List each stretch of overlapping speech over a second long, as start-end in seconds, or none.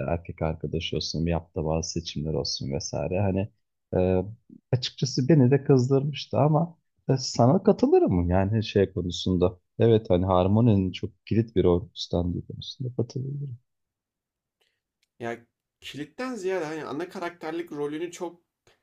none